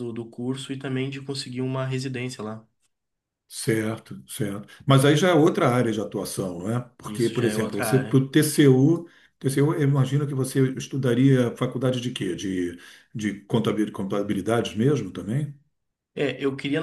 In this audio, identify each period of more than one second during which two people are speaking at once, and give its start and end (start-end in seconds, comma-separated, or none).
7.1-8.3